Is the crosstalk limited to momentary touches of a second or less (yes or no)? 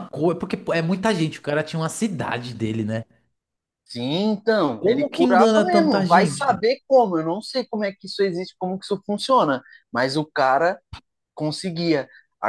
no